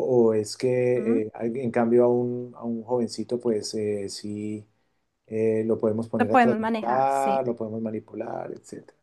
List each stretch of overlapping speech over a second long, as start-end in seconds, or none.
6.2-7.4